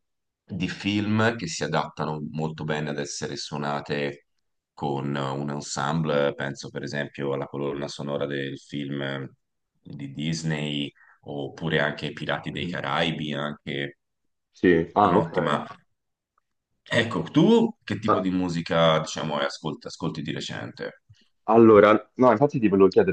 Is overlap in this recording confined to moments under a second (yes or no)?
yes